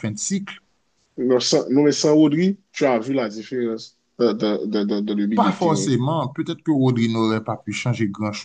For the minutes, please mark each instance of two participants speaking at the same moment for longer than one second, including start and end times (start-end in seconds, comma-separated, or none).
none